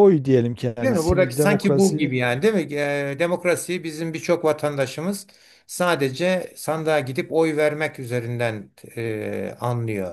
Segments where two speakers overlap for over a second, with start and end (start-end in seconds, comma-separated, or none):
0.8-2.2